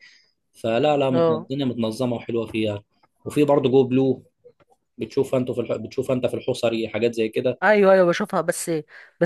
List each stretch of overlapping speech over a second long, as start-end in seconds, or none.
none